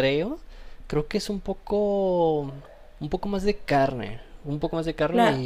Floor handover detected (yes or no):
yes